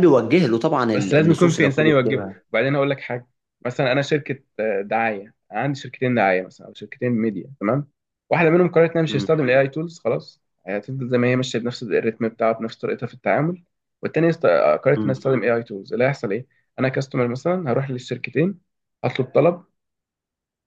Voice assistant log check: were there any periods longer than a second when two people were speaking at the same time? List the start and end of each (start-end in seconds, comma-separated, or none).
0.9-2.4